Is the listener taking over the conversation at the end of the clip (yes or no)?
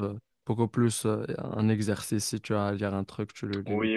yes